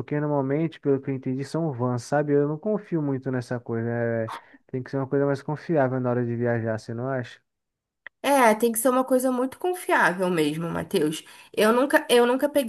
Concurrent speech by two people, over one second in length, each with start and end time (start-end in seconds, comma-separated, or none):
none